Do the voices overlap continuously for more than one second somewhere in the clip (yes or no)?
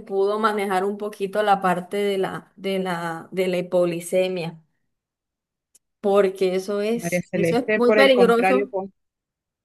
yes